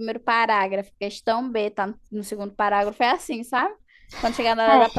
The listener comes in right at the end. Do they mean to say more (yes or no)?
no